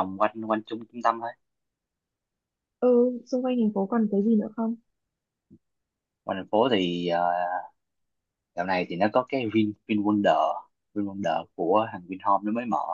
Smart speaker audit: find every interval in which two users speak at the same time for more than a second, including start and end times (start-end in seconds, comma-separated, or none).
none